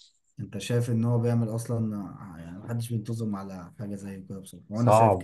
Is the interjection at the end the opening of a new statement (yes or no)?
yes